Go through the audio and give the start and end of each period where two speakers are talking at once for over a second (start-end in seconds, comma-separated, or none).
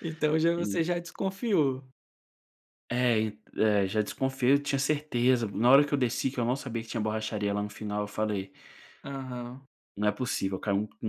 none